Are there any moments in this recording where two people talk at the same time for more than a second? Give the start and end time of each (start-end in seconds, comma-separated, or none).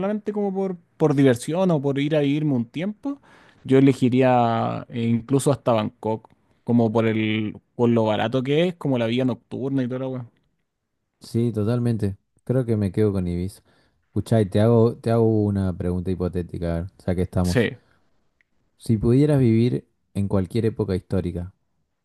none